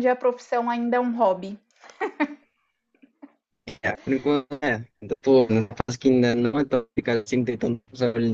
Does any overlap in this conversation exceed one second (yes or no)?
no